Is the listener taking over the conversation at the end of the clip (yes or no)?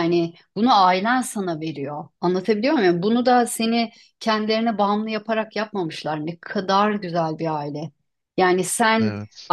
no